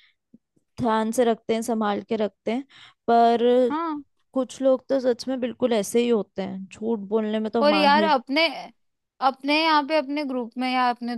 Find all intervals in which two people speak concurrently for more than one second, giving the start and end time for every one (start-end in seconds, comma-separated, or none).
none